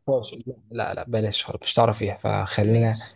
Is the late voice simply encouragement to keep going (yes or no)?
yes